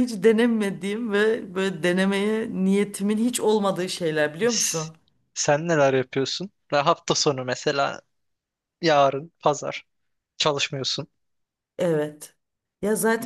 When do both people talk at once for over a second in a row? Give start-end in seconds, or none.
none